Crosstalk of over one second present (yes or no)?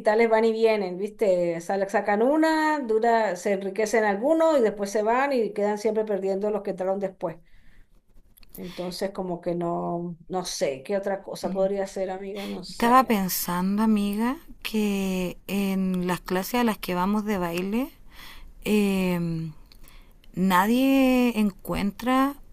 no